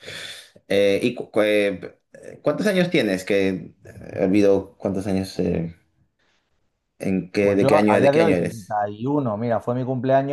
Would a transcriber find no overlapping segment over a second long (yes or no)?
no